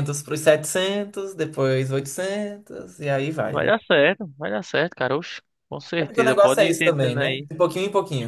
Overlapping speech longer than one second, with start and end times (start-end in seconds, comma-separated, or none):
6.0-7.5